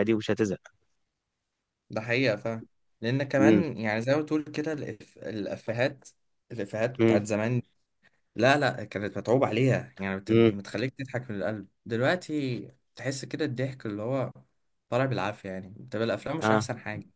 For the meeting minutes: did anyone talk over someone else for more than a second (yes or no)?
no